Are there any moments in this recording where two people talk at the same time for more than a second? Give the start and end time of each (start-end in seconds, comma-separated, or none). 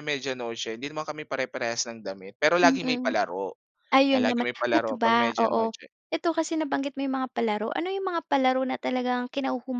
4.1-5.8